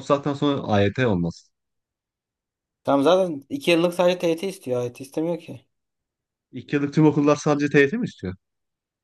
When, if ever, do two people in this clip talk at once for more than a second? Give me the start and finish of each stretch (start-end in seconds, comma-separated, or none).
none